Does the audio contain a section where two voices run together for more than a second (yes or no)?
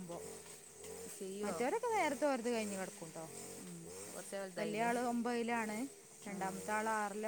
no